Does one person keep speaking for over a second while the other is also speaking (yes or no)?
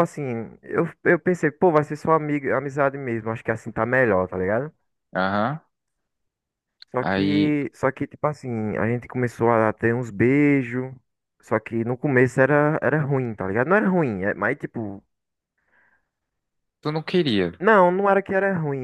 no